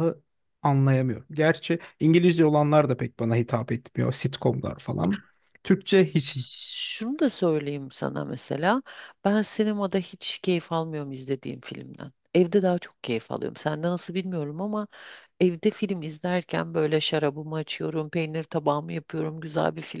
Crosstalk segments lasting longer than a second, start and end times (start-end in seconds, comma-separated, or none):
none